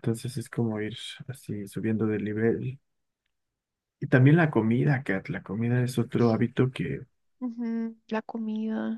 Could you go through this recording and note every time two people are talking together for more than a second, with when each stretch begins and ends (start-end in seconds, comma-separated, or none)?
none